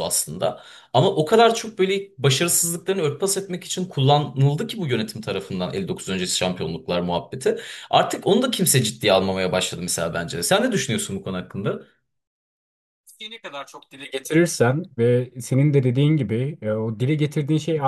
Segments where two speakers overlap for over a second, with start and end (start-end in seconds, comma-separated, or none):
none